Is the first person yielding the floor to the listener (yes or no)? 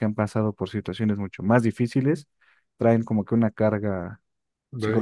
yes